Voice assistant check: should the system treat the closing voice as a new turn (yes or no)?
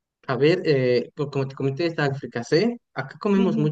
yes